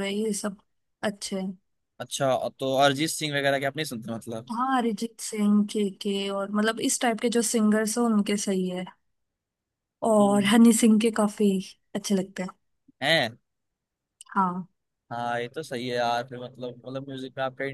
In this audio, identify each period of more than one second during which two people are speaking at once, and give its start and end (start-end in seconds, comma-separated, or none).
none